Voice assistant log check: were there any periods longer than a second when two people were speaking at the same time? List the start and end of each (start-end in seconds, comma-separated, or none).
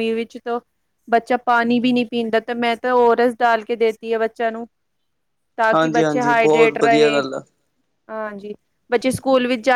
5.7-7.2